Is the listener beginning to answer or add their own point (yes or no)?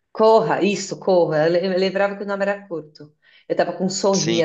yes